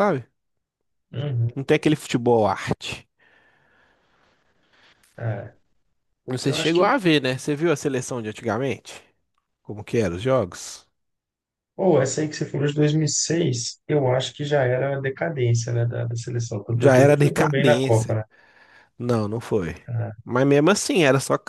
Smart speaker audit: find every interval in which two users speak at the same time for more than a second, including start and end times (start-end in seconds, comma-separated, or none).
16.8-18.2